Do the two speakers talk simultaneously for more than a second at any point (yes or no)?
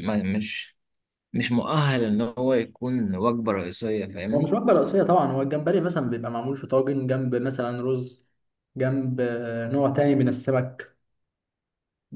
no